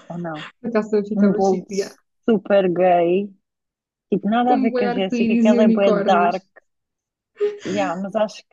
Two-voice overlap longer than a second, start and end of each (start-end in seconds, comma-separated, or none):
4.5-6.3